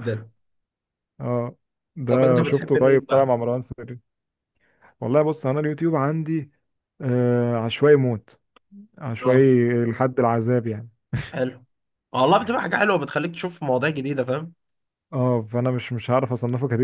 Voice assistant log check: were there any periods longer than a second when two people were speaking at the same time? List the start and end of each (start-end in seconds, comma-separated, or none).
2.1-3.3